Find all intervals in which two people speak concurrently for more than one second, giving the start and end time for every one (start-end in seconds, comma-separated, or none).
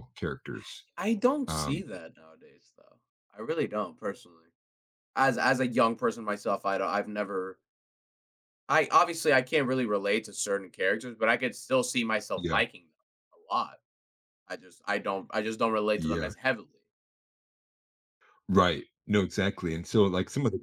none